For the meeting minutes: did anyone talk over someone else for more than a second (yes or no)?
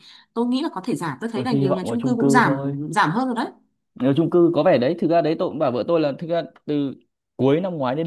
yes